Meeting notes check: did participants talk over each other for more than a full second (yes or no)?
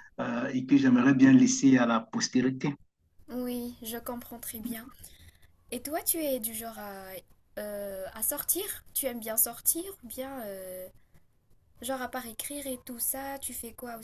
no